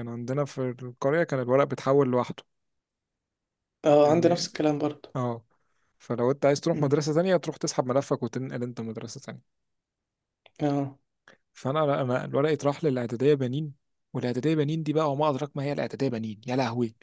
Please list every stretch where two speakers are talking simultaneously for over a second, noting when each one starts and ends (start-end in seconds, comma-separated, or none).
none